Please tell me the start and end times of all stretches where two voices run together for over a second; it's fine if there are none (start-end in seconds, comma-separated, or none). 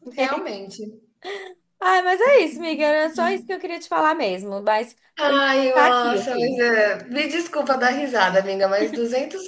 5.2-6.6